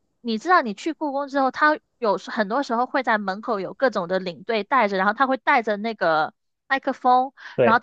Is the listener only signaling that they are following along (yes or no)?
yes